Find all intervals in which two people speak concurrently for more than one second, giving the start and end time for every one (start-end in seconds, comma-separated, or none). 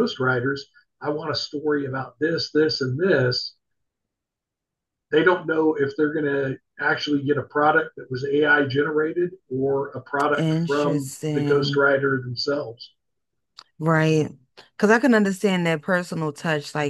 10.3-11.8